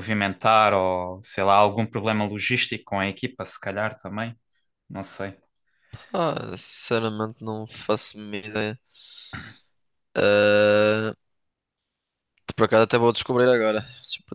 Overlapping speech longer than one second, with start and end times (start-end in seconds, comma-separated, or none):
none